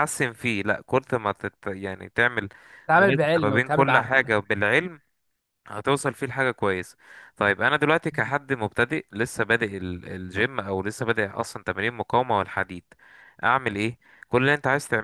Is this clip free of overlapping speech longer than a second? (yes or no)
no